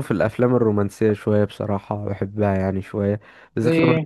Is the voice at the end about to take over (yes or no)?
no